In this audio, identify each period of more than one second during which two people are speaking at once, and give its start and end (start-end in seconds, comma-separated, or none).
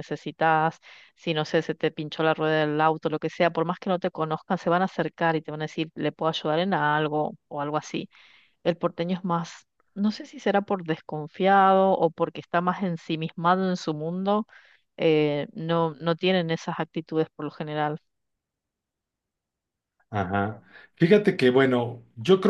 none